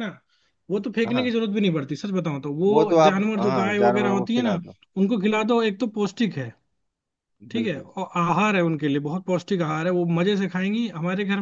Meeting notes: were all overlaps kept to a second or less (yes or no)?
no